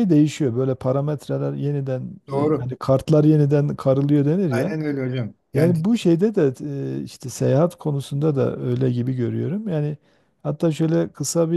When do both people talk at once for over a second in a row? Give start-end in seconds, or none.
none